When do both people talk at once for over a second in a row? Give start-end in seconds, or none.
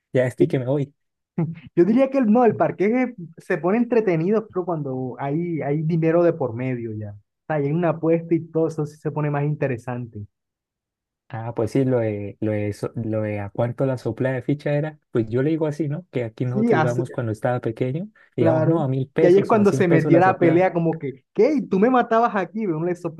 18.4-20.7